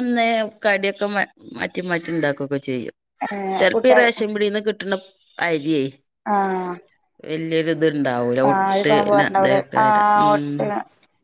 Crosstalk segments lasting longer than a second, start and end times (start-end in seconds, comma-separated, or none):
8.5-10.6